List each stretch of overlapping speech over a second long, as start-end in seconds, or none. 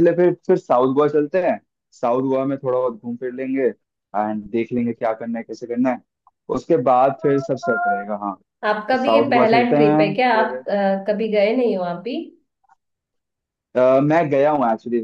8.7-10.6